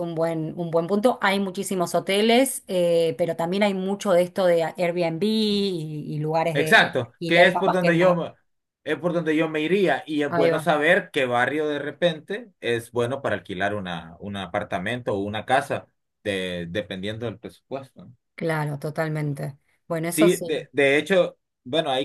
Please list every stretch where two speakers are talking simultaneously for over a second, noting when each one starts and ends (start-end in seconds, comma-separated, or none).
6.5-7.9